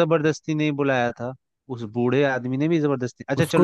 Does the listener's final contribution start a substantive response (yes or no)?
no